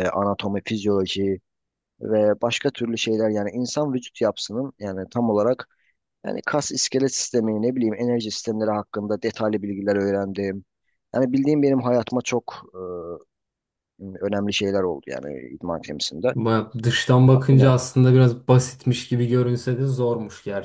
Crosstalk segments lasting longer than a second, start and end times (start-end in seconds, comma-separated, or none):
none